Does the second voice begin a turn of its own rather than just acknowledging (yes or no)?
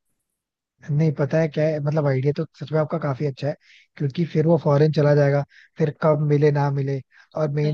no